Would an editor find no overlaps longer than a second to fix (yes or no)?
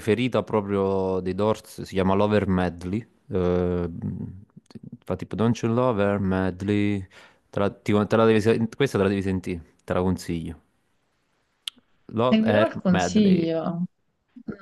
no